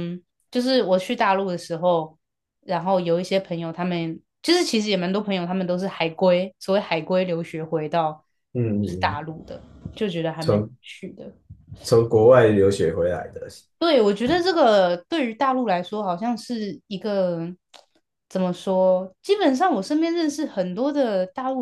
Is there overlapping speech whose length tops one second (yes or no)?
no